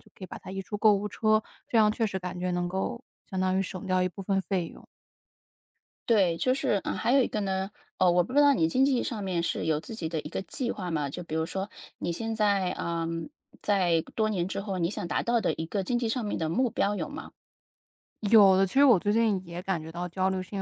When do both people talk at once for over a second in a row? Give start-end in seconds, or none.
none